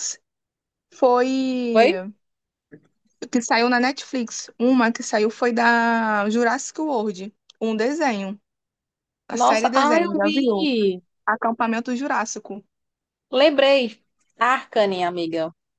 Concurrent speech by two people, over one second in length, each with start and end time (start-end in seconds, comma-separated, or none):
9.3-10.7